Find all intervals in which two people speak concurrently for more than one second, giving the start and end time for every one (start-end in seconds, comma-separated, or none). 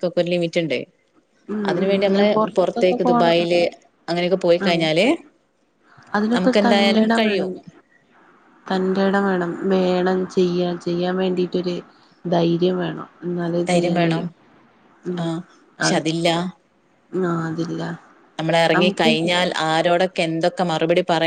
1.7-3.4